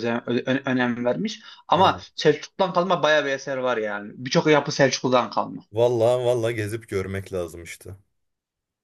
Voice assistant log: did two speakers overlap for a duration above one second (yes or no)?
no